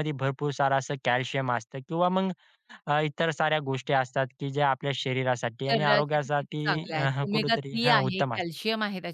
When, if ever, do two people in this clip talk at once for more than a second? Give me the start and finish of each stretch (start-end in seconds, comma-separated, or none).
5.7-8.6